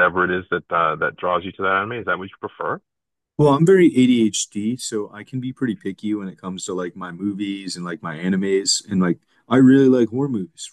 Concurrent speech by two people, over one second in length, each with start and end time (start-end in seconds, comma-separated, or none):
none